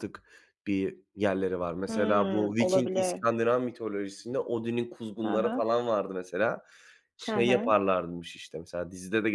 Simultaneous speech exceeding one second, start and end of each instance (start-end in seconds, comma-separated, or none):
1.9-3.2